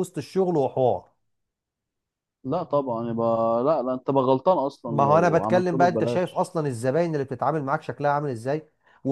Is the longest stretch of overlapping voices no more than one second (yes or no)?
no